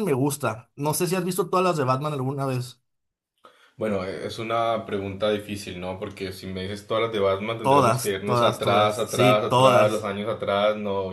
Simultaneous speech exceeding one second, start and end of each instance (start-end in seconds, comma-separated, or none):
7.6-10.1